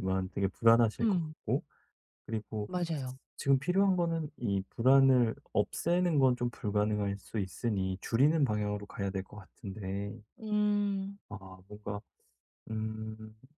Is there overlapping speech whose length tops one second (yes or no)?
no